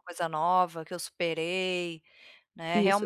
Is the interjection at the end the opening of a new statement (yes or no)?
yes